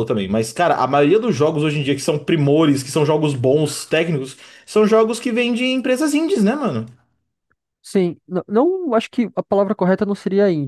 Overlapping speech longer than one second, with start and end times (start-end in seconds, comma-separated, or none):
none